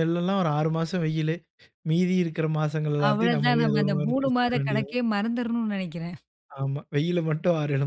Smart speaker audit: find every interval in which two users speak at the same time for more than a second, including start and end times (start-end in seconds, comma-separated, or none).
3.1-5.0